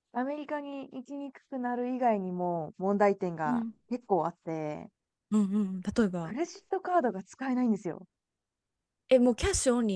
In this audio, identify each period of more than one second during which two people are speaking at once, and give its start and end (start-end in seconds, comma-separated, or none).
none